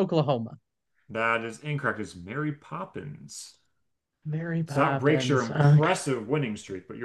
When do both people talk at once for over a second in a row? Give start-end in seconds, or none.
4.7-5.9